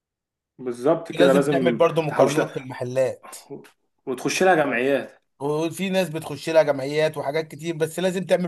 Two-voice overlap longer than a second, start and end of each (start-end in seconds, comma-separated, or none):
1.1-2.7